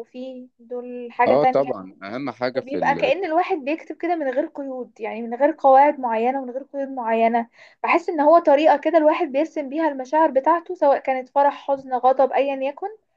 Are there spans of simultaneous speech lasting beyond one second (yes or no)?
no